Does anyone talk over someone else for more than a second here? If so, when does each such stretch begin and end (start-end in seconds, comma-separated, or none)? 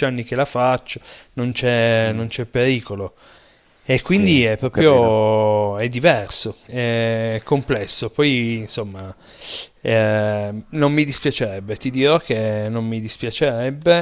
4.0-5.3